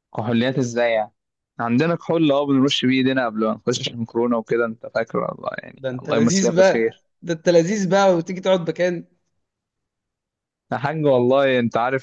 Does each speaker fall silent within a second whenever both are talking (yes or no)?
no